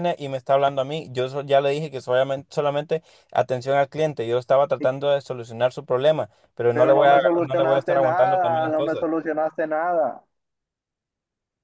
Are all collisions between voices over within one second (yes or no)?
no